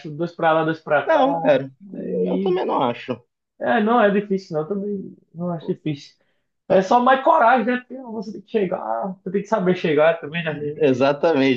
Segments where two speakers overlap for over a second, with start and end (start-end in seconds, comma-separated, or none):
1.1-2.6